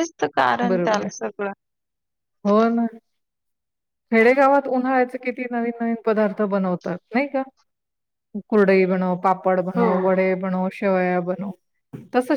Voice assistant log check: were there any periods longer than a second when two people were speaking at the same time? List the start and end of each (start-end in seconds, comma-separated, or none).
none